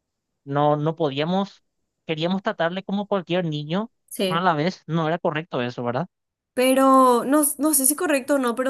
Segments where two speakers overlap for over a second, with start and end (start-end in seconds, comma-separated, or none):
none